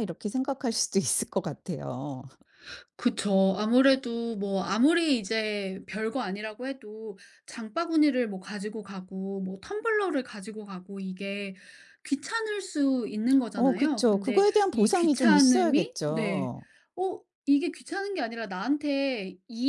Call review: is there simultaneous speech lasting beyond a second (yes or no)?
yes